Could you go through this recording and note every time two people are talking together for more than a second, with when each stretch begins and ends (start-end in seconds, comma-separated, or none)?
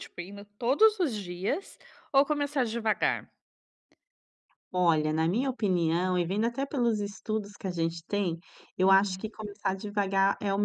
none